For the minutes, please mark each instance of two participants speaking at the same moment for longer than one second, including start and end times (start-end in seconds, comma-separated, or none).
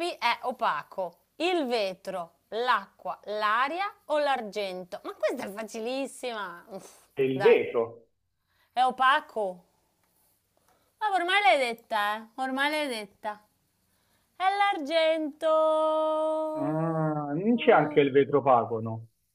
16.9-18.1